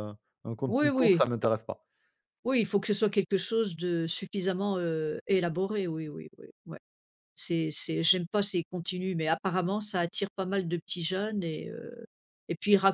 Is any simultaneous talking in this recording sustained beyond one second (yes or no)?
no